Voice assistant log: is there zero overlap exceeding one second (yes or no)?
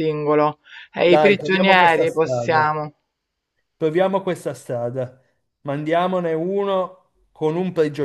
no